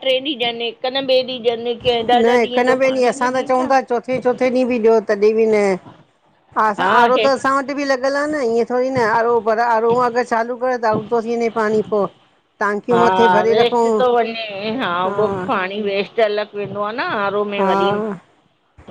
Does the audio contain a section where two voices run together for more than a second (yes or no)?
yes